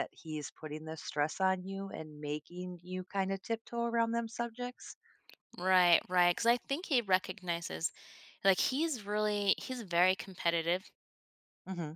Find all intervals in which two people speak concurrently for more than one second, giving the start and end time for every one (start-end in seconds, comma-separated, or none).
none